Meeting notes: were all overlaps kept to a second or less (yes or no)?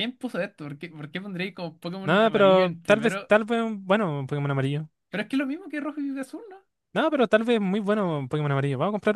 no